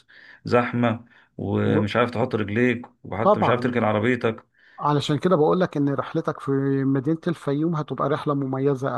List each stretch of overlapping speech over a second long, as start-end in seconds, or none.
none